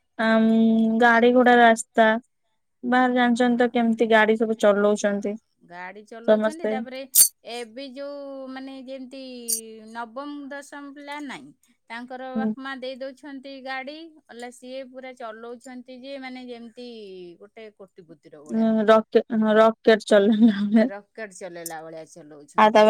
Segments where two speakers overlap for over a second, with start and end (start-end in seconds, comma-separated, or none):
none